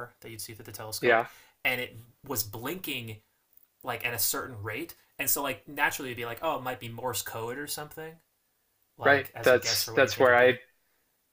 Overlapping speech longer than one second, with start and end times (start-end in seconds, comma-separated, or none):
9.0-10.6